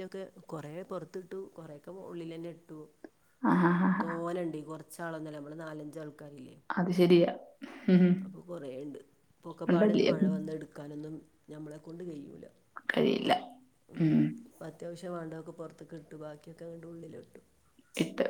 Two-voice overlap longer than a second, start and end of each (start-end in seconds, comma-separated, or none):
none